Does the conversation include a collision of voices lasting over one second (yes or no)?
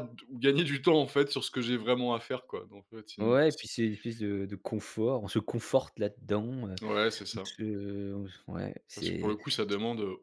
no